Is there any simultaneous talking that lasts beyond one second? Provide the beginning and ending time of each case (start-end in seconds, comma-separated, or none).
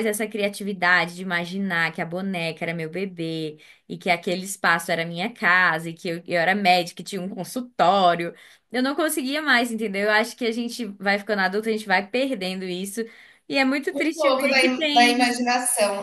13.9-15.4